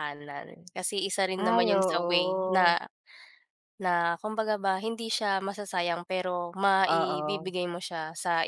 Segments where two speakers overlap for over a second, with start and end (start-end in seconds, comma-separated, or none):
1.5-2.8